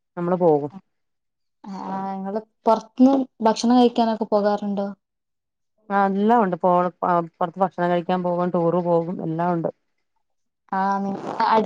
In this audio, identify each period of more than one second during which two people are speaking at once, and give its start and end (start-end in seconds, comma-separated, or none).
none